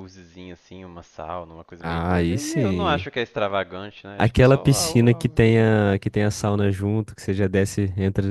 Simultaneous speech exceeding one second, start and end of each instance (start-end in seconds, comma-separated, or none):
1.8-3.1, 4.2-5.4